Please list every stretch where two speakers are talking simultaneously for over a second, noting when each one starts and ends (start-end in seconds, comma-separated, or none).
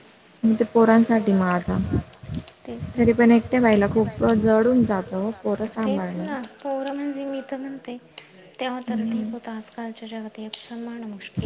none